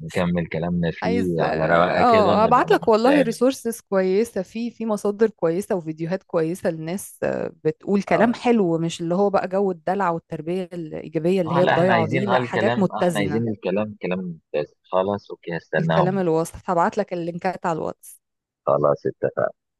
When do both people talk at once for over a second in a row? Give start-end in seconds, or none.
1.0-3.4, 11.4-13.4